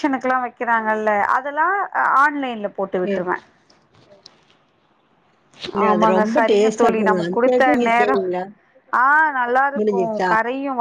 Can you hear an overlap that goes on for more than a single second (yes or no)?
yes